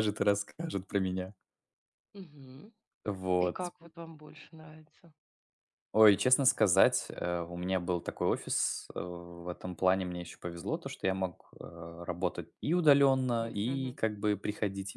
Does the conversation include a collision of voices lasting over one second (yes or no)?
no